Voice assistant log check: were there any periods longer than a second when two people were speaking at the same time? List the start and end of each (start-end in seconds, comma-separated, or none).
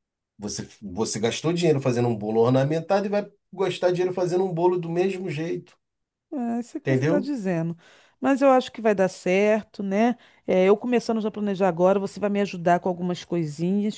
none